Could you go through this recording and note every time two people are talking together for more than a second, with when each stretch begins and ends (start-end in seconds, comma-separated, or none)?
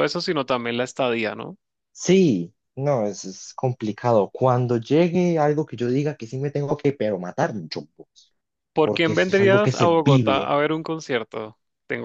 8.8-10.5